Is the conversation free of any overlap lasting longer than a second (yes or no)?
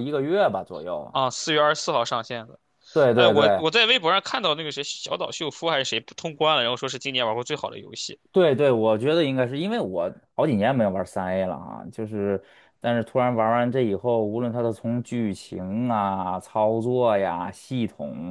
yes